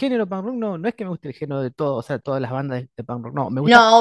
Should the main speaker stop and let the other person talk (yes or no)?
yes